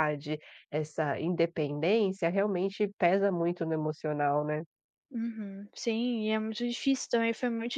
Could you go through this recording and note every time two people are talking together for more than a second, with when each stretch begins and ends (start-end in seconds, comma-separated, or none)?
none